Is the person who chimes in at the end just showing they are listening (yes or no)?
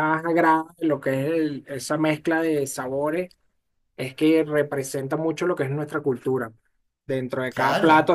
yes